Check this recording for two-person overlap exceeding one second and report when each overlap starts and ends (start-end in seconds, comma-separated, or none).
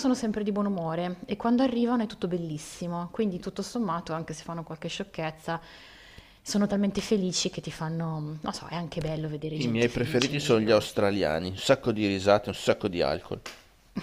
9.5-10.8